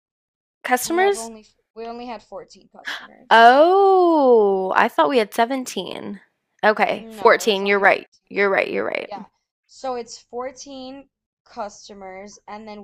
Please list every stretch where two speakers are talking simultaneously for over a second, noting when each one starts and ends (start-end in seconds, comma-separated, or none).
6.9-8.3